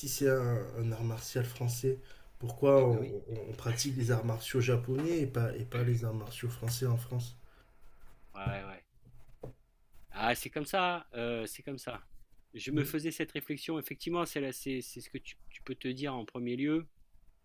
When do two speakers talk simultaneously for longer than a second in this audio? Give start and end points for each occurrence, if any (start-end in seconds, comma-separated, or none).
none